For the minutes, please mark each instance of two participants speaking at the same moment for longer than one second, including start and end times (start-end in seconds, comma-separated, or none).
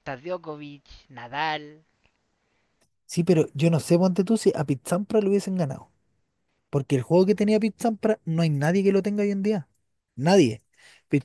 none